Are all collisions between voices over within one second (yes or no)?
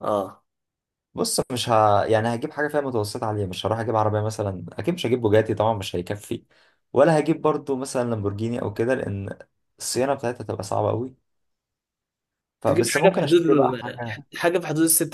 no